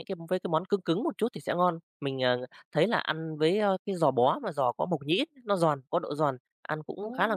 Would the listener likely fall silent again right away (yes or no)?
yes